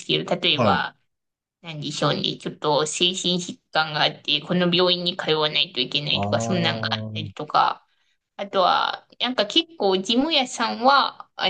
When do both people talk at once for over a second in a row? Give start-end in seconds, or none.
6.1-7.3